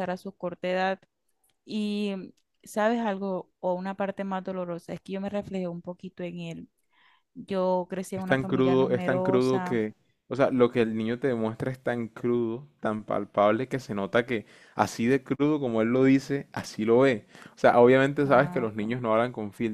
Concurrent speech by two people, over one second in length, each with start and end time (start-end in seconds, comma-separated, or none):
8.1-9.8